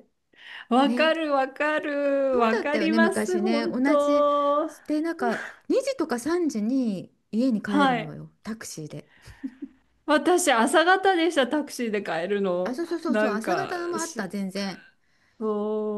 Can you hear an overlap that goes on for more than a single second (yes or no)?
yes